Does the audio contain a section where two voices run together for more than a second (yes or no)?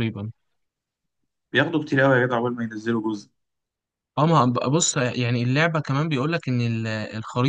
no